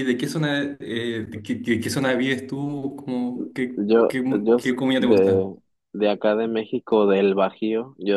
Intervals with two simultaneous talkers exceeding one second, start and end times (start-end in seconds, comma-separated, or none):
3.8-5.5